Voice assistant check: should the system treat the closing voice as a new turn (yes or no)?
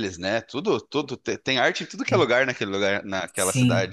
yes